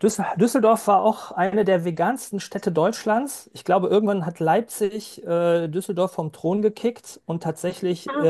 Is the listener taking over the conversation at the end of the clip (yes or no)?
no